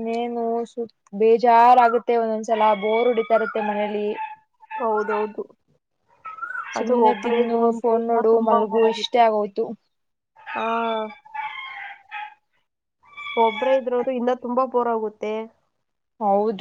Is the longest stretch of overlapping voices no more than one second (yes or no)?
no